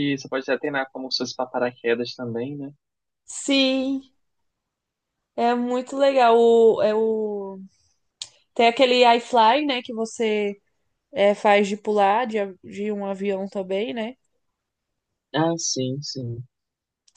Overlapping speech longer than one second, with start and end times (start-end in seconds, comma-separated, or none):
none